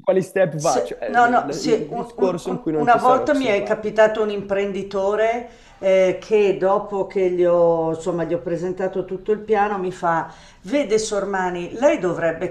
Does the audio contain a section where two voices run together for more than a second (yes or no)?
yes